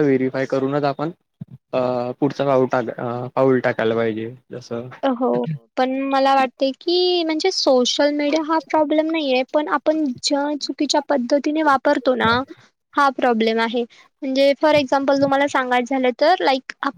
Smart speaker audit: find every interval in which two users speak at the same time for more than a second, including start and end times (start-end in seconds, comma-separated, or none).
none